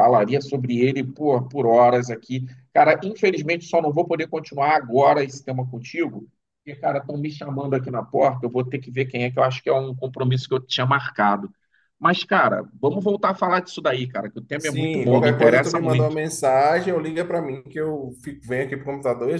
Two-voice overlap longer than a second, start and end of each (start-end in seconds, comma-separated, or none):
14.6-16.2